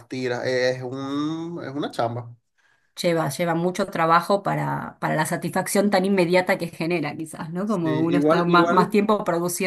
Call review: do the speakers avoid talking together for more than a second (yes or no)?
no